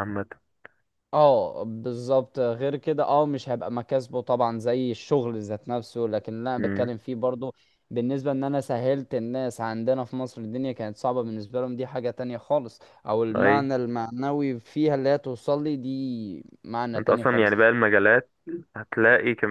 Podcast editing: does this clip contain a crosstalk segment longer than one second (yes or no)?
no